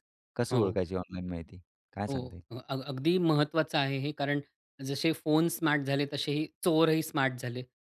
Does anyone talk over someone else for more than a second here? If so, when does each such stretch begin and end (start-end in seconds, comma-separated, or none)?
none